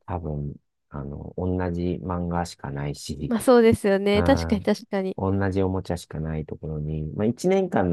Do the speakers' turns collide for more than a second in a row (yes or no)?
no